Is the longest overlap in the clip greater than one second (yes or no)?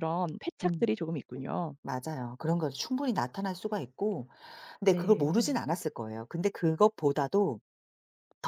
no